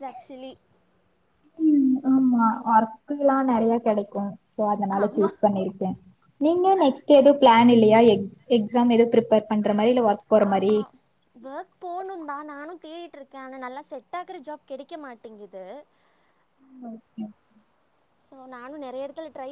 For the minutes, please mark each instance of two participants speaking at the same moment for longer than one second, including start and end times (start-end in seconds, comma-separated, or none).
none